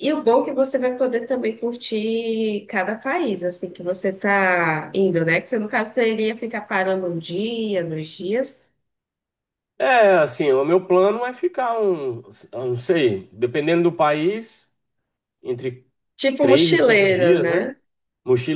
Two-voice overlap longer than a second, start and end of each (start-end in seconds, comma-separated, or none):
16.4-17.7